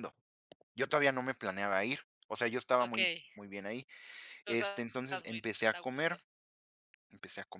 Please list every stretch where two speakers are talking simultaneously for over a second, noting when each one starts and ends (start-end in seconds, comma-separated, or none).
4.5-6.2